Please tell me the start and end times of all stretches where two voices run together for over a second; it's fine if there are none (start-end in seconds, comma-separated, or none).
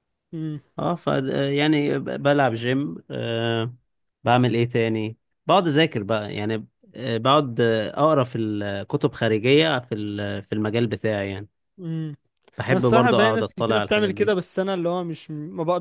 12.7-14.3